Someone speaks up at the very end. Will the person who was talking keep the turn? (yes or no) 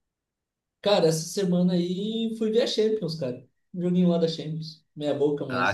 no